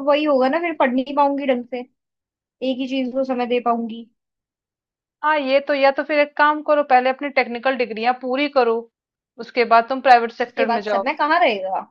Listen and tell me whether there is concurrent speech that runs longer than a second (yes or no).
no